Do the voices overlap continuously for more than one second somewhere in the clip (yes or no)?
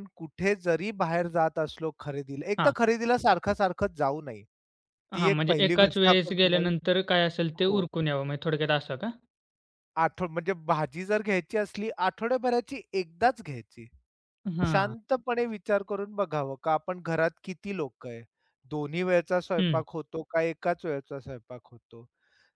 yes